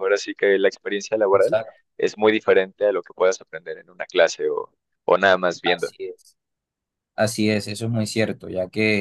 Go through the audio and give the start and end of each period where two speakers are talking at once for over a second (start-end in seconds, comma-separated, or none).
none